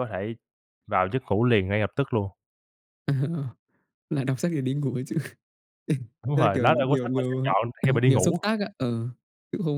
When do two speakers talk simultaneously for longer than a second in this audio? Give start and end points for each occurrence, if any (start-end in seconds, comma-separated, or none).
6.3-8.4